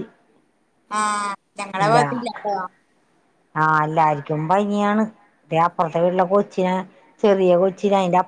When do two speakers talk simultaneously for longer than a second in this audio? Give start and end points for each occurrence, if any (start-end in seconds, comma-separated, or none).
none